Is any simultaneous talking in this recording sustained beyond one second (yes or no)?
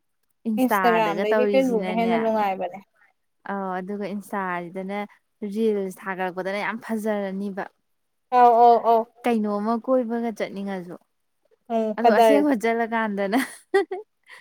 yes